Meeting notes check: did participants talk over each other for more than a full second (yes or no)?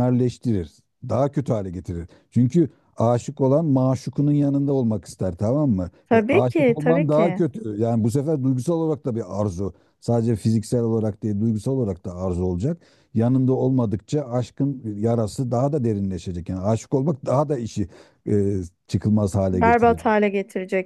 yes